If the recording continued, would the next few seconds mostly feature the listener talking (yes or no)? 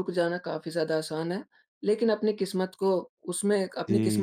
no